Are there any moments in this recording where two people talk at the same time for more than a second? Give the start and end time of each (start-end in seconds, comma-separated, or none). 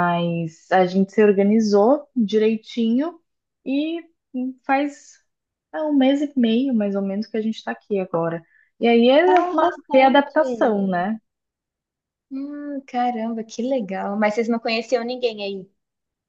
9.3-10.8